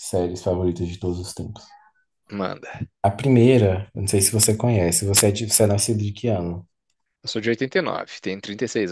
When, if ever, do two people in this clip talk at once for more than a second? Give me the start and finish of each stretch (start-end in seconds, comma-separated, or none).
none